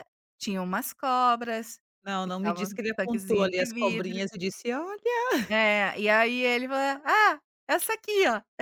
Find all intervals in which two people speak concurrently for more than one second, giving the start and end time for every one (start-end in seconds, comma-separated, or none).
2.2-4.2